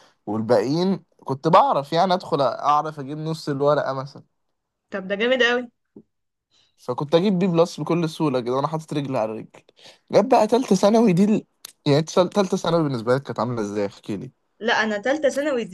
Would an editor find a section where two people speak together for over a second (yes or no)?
no